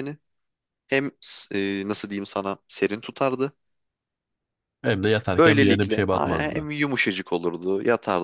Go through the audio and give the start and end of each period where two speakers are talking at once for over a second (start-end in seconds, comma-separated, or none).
5.3-6.7